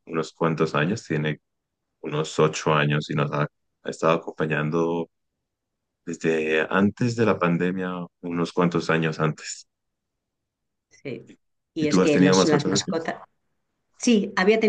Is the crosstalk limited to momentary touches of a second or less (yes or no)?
no